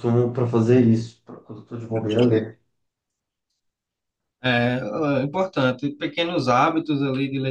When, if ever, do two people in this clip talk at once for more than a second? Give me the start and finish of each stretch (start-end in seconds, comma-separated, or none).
none